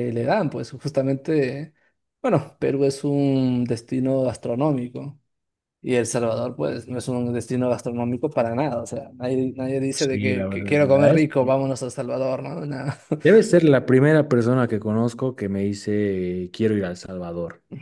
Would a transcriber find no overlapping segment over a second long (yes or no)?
no